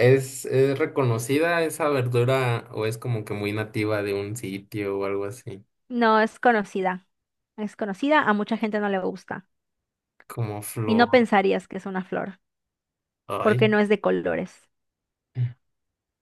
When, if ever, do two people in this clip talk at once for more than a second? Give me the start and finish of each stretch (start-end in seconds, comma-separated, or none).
none